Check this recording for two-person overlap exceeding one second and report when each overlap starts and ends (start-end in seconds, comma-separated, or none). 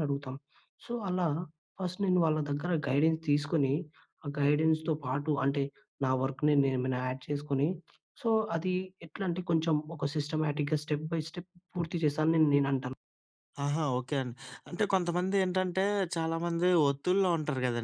none